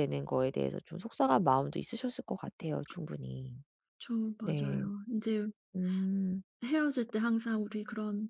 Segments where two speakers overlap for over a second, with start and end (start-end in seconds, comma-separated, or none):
none